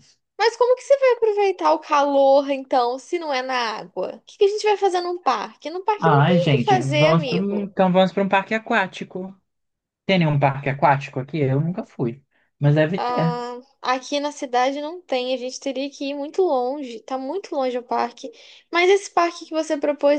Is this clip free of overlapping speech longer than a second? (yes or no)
no